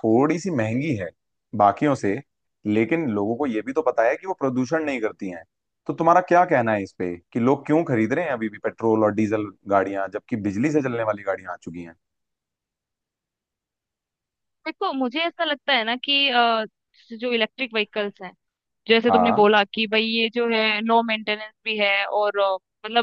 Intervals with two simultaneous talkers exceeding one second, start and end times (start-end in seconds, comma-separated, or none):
none